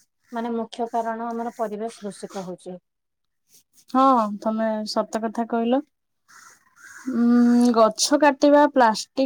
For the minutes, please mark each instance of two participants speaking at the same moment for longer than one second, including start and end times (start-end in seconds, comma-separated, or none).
none